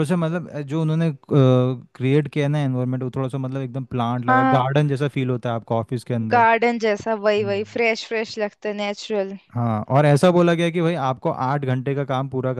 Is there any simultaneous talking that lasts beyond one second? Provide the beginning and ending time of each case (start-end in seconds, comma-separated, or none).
none